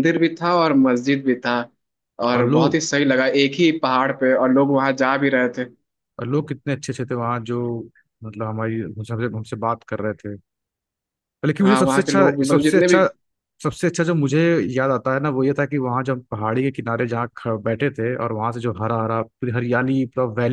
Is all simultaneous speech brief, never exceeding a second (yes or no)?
no